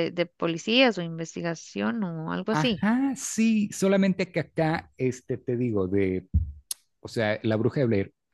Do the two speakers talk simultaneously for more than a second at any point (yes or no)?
no